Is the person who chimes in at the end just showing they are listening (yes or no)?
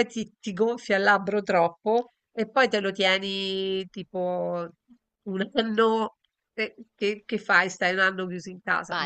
no